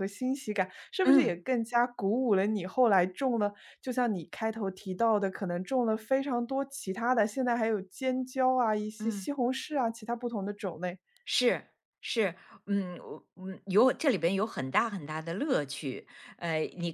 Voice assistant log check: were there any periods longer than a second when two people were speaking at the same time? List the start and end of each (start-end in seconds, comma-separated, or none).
none